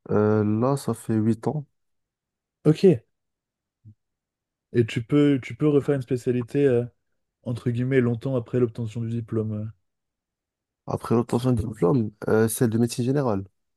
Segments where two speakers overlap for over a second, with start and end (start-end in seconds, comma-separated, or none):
none